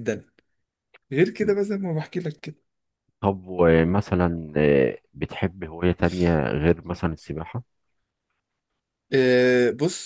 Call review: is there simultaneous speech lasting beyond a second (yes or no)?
no